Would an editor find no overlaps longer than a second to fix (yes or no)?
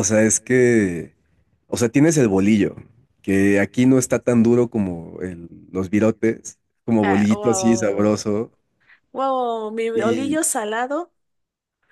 no